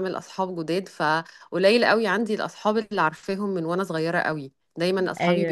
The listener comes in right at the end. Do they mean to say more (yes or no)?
no